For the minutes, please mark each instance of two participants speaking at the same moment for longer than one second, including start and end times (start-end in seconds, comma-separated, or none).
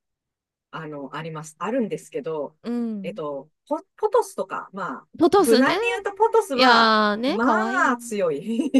6.5-7.9